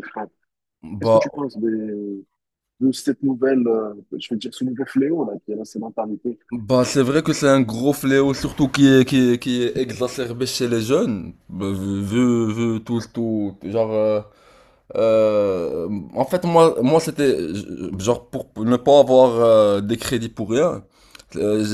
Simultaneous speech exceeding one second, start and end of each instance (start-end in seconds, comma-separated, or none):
none